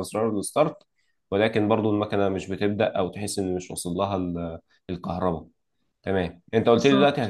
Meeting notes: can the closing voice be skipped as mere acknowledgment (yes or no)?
yes